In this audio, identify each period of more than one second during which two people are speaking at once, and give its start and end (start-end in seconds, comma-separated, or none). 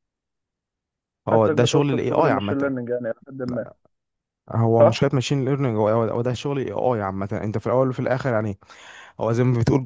1.3-2.7